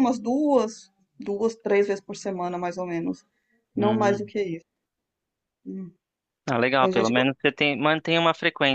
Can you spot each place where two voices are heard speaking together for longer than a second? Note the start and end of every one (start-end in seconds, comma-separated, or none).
none